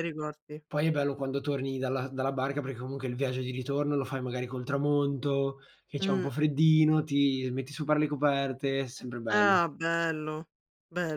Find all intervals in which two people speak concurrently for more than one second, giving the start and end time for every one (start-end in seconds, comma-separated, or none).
none